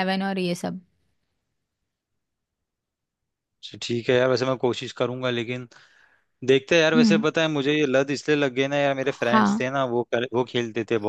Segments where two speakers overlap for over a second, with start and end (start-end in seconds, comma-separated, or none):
none